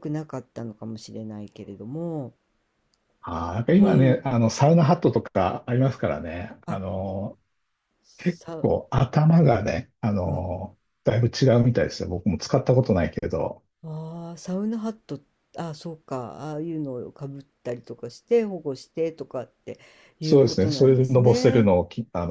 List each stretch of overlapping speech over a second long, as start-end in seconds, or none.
20.2-21.7